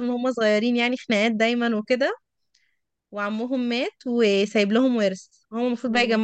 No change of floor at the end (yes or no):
yes